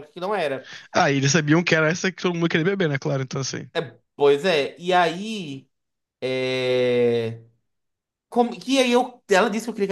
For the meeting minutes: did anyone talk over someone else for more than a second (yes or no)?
no